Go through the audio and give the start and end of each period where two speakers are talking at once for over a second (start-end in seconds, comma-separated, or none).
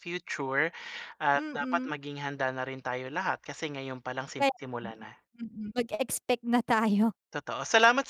none